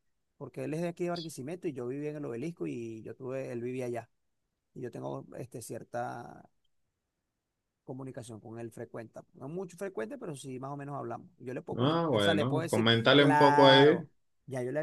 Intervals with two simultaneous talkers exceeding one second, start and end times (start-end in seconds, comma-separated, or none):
11.8-14.1